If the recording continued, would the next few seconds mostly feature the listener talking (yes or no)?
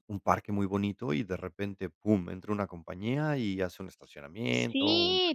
yes